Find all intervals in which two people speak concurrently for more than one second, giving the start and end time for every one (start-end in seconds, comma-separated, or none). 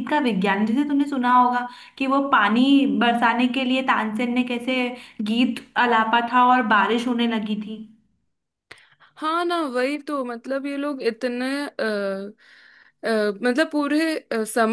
none